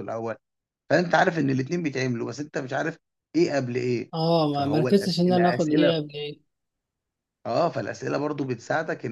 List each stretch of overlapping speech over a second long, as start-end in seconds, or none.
4.5-5.9